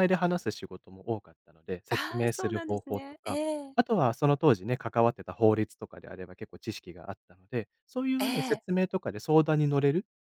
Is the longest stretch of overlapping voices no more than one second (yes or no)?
no